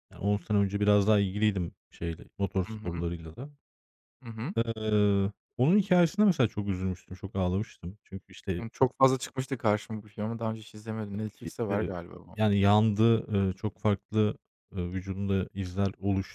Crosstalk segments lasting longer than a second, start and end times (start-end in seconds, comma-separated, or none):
none